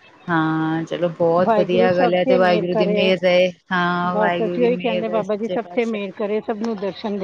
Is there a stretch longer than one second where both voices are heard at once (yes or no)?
yes